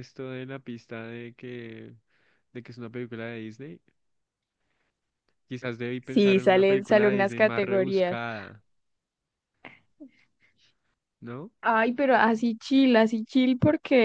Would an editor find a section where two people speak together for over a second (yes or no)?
yes